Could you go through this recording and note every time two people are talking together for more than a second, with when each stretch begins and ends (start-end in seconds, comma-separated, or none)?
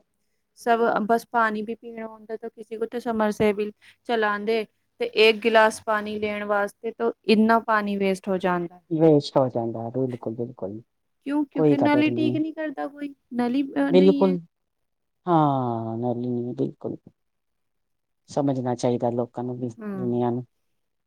none